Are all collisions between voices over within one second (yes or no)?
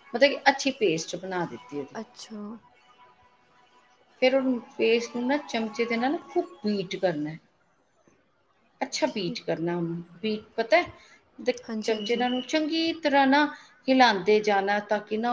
yes